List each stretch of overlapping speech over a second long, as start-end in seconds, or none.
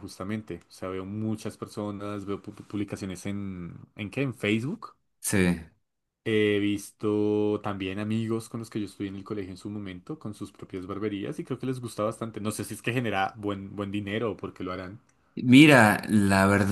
none